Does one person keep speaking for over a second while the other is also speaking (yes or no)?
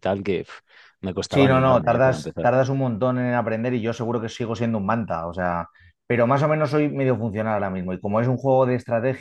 yes